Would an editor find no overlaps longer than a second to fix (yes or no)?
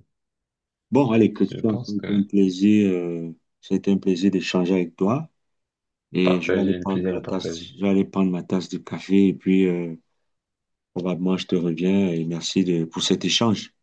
no